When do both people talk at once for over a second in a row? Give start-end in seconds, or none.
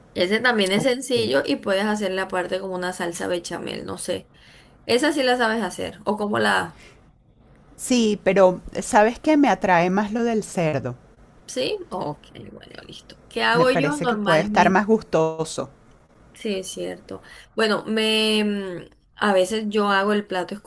13.5-14.8